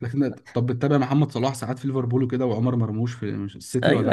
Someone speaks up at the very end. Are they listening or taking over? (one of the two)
taking over